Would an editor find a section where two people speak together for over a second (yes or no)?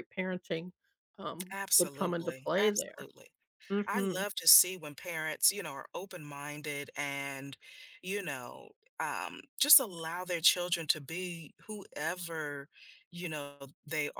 yes